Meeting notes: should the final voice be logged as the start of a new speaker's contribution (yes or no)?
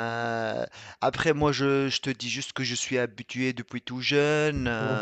no